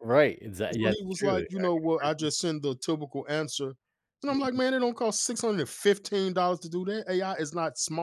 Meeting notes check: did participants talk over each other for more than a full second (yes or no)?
yes